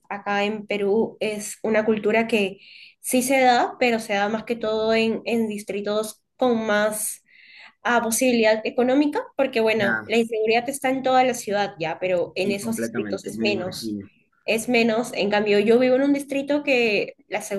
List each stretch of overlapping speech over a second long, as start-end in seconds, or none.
12.4-13.9